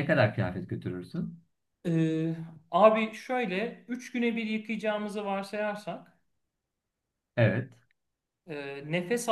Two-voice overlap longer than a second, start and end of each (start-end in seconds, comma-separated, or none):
none